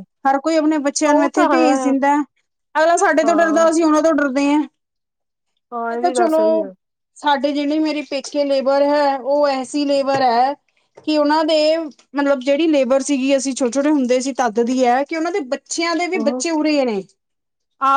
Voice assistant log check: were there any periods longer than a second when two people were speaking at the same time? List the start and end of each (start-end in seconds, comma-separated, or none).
none